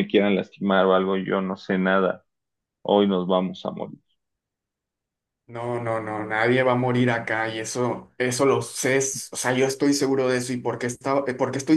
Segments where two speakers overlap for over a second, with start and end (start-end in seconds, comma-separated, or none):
none